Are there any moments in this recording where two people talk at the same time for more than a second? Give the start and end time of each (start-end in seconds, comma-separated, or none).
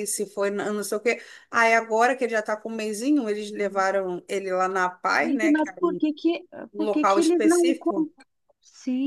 6.7-8.1